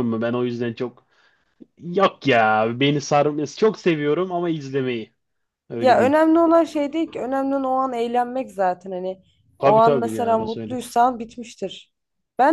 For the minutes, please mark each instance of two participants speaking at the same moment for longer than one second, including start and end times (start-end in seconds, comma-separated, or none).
9.6-10.8